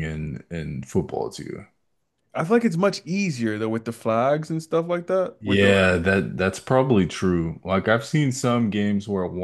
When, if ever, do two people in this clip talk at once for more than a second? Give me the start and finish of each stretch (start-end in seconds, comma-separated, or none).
none